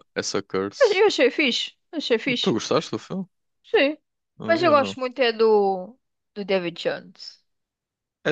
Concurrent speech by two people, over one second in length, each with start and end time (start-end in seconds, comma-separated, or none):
none